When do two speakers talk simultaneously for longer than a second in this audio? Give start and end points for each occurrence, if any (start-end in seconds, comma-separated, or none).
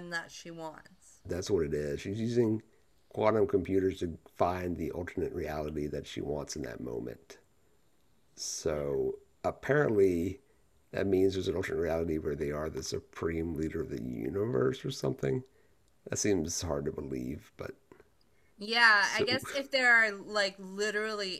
none